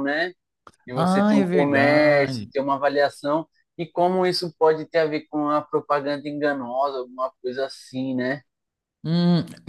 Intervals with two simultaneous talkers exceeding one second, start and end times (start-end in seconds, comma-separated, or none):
0.9-2.5